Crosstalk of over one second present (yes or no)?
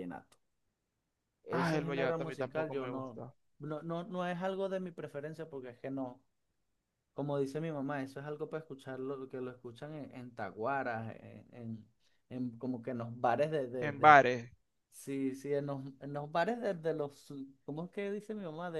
yes